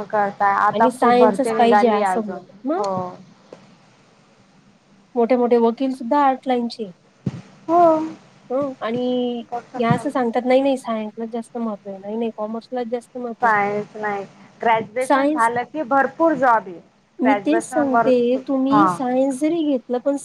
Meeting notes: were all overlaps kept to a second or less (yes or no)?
no